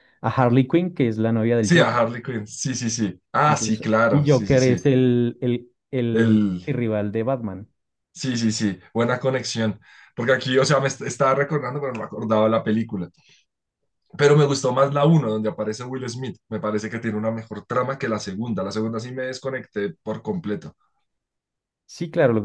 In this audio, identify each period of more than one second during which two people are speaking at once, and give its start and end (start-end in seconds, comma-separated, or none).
3.5-4.9